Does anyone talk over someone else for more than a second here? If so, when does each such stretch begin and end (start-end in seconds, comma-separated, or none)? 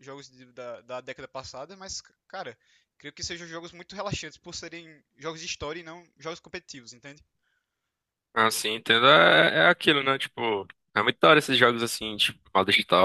none